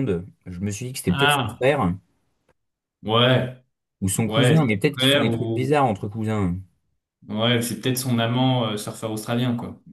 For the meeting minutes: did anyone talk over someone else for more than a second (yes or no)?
yes